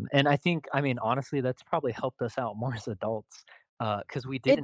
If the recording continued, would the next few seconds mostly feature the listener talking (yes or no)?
no